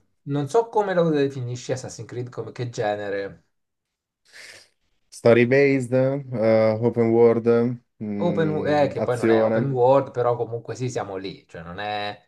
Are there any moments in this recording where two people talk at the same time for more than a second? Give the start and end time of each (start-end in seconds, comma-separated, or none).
8.2-9.7